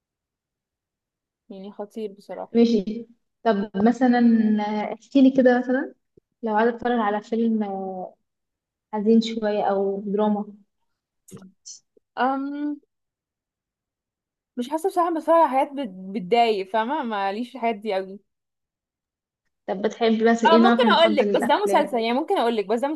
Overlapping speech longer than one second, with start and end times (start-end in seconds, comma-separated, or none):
20.5-22.0